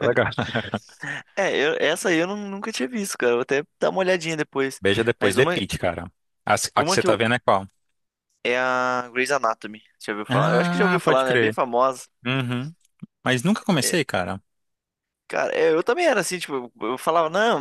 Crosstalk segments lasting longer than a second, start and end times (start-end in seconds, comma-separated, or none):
10.3-11.6